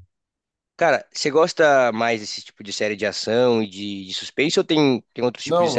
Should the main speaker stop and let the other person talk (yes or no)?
yes